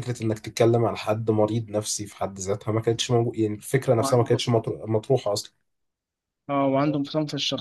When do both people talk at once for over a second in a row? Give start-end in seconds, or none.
none